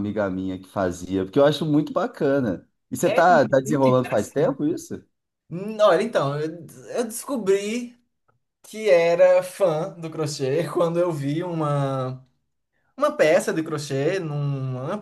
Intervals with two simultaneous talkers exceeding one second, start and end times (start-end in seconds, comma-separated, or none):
3.0-4.7